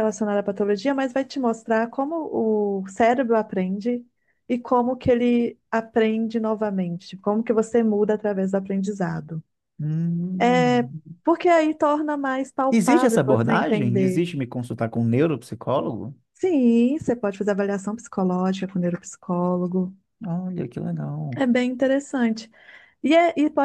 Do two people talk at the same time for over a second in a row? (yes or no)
yes